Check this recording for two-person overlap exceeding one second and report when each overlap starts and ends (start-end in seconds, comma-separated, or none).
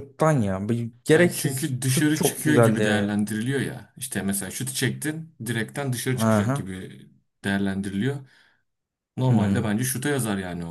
1.1-3.2